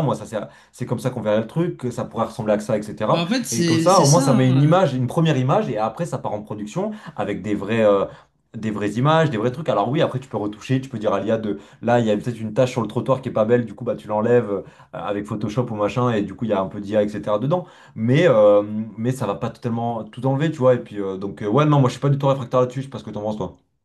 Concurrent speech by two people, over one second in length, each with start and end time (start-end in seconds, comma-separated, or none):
3.1-4.8